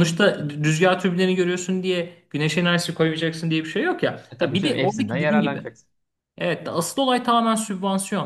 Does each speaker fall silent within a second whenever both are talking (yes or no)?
no